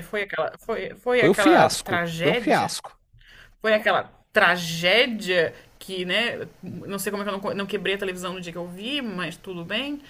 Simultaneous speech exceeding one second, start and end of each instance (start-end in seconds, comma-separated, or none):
1.1-2.7